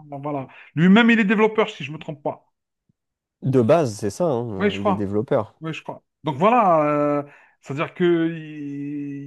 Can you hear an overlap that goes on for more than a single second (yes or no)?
no